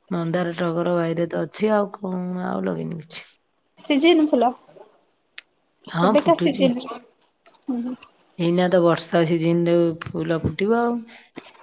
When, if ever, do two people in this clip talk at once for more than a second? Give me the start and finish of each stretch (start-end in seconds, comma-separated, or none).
none